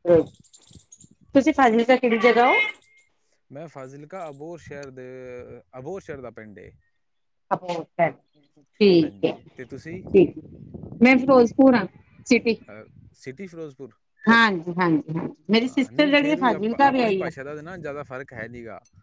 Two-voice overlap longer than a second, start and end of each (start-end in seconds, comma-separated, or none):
15.6-17.3